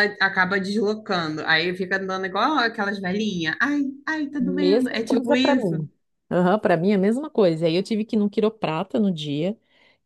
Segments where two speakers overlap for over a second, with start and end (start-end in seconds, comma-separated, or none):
4.4-5.8